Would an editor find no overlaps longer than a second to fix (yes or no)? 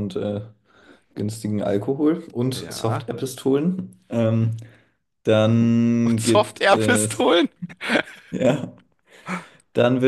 no